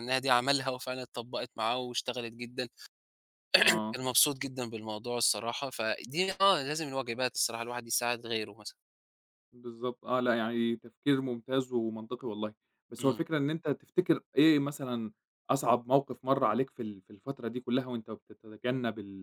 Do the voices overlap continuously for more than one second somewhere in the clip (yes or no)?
no